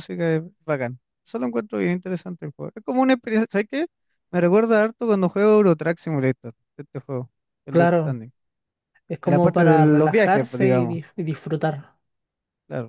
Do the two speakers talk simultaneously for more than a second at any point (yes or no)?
yes